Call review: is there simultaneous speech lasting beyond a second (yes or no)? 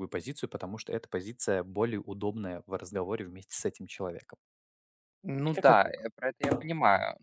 no